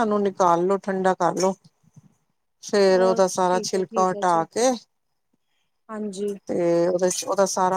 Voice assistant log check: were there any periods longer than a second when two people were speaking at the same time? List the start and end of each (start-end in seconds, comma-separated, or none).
2.9-4.4